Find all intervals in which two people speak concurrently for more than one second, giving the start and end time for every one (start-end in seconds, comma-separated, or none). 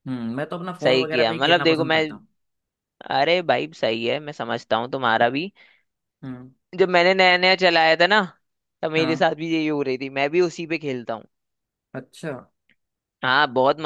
0.8-2.0